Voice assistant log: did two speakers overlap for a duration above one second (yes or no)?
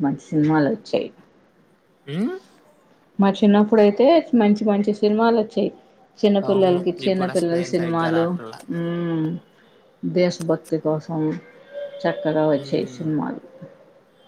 yes